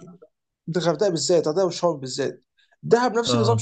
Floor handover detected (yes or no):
no